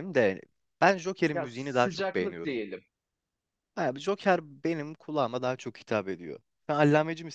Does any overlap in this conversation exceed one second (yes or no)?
yes